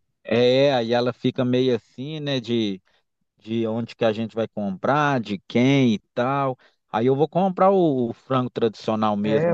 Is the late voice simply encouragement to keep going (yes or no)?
no